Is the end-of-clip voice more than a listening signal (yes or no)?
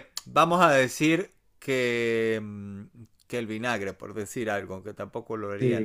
yes